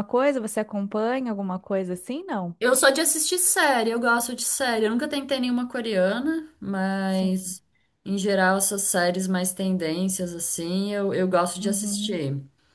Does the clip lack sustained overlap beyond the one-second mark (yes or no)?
yes